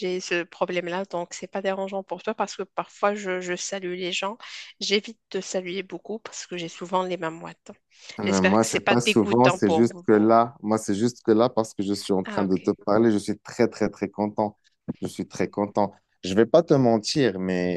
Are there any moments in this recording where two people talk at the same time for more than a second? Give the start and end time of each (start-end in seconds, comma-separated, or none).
8.2-10.1